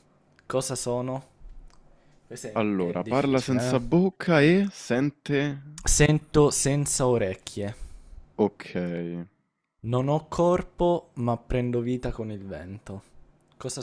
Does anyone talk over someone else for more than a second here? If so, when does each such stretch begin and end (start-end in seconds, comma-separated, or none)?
2.5-3.8